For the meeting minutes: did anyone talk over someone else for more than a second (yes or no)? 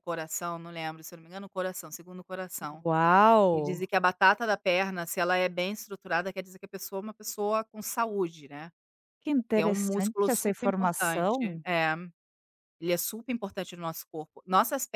yes